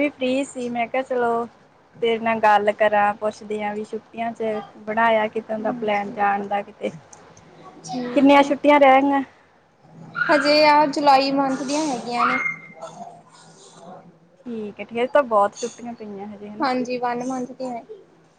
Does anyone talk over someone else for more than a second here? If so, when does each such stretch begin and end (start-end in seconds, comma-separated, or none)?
none